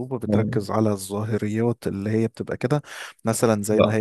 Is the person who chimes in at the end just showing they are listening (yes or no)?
yes